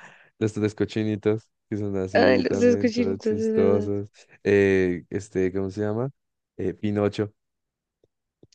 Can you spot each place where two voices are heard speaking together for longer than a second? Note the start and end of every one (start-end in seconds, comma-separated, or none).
2.1-3.9